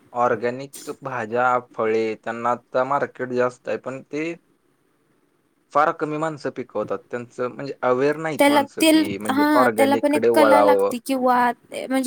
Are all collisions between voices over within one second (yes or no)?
no